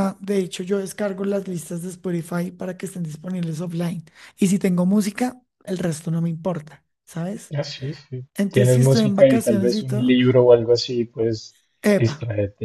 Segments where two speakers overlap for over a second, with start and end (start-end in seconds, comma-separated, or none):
8.3-10.2